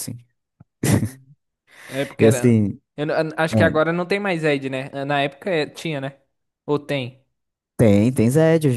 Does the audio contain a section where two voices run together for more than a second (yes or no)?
no